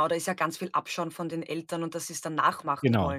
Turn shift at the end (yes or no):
yes